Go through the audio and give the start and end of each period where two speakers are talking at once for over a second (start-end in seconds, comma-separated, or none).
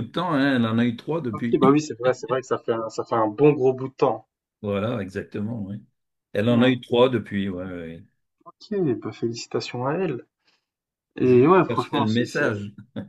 11.2-12.5